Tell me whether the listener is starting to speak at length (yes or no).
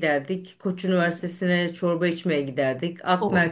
no